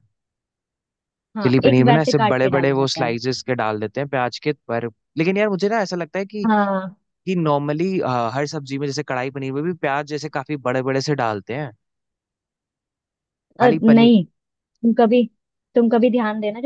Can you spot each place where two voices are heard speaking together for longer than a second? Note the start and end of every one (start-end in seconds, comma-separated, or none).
1.4-3.1